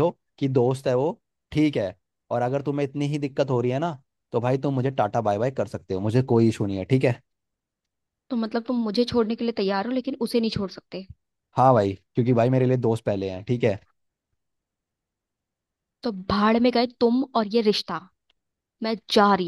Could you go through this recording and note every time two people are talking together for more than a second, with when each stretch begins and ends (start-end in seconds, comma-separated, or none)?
none